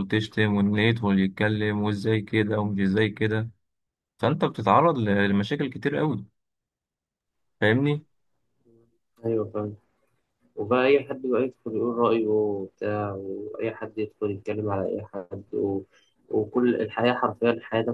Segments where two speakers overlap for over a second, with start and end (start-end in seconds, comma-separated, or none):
none